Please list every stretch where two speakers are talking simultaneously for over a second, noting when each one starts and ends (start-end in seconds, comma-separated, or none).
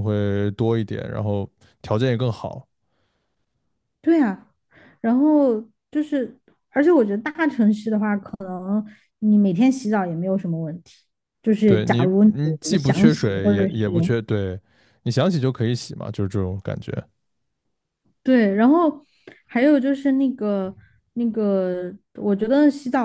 11.6-13.7